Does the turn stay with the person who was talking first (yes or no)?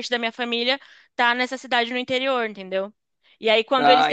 yes